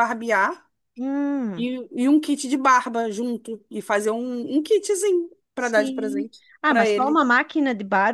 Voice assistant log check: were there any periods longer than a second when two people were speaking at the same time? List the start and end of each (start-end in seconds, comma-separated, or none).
5.6-7.2